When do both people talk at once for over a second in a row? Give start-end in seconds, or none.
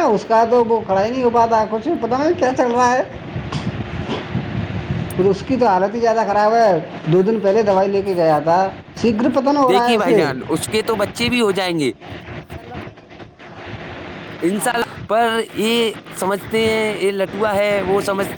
none